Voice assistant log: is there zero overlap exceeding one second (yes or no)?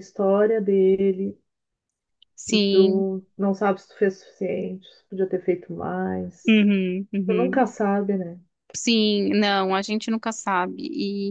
yes